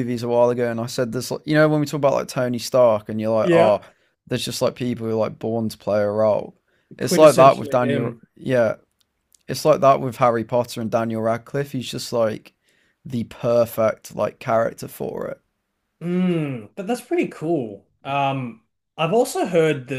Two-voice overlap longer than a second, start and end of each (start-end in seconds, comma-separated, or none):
7.0-8.2